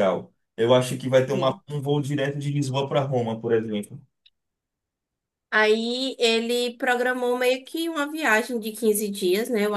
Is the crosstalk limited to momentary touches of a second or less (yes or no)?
yes